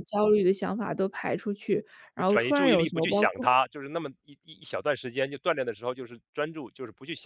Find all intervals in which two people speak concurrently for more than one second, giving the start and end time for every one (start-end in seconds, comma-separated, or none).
2.2-3.5